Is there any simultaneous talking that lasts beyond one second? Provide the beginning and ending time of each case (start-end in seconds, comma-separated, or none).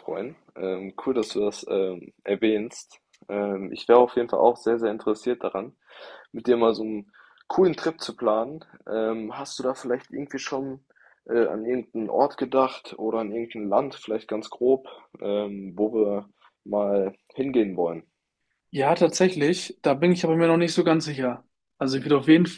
none